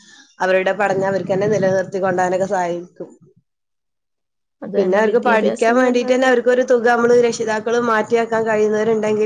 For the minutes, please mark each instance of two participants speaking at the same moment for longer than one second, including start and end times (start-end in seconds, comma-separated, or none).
4.8-6.3